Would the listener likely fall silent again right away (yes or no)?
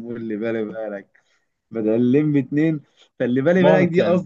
yes